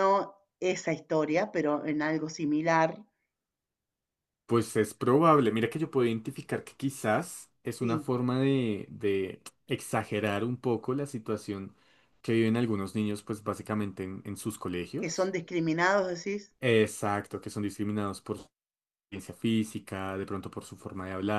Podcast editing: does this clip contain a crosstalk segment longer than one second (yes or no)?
no